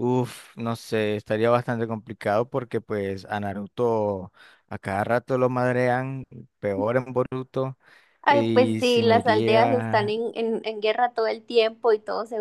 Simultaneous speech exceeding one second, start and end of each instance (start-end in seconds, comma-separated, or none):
8.3-10.1